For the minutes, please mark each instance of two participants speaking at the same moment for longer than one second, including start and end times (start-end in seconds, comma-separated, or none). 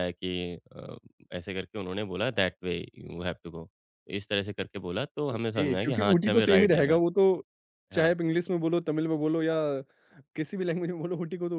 5.3-7.0